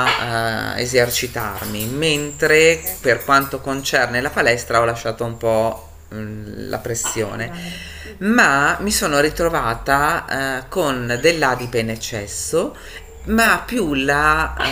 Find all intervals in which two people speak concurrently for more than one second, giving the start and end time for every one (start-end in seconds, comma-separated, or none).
none